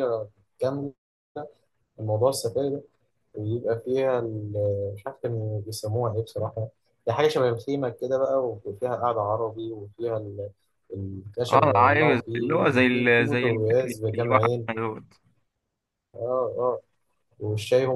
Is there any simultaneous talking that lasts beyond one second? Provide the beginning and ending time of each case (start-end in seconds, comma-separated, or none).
11.5-14.7